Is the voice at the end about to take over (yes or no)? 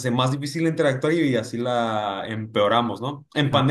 no